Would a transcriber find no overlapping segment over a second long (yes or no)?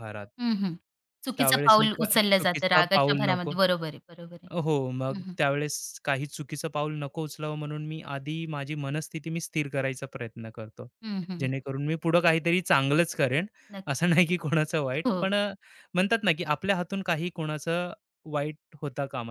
no